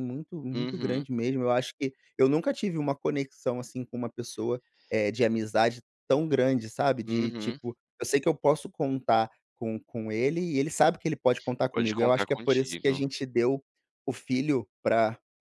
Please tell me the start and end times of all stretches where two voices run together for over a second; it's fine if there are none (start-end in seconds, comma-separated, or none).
11.7-13.0